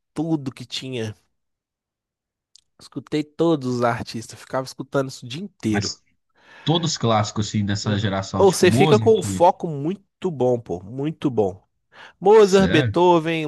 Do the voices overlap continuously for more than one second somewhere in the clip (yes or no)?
yes